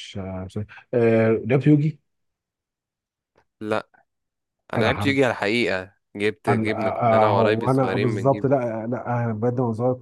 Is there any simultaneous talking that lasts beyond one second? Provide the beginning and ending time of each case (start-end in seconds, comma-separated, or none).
6.5-8.4